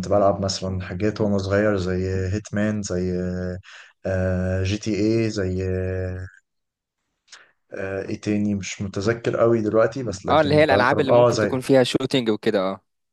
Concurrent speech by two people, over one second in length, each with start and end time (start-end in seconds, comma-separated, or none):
10.3-11.5